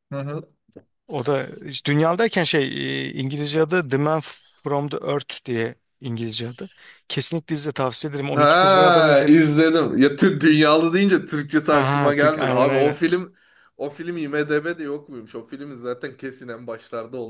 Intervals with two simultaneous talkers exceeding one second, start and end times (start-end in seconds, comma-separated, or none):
8.3-9.5, 11.7-13.0